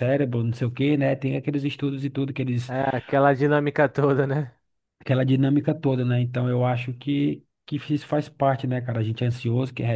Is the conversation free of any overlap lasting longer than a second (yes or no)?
yes